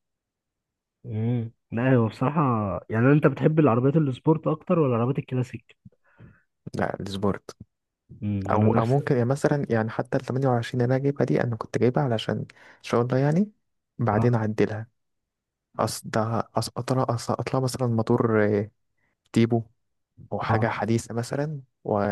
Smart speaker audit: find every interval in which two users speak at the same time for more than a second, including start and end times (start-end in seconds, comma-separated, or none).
none